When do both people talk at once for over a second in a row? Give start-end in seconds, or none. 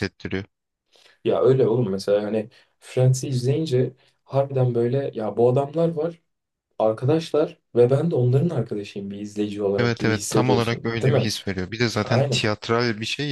9.8-11.3